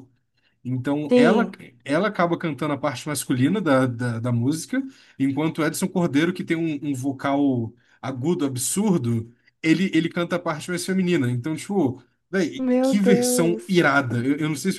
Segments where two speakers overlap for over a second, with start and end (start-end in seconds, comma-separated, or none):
12.6-13.9